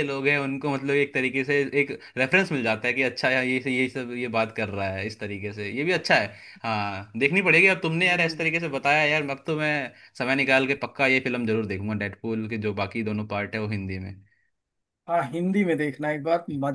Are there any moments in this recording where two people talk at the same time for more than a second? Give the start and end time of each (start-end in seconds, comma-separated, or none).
none